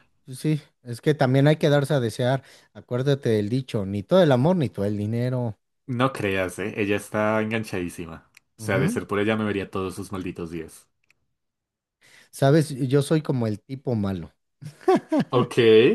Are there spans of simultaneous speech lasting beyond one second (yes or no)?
no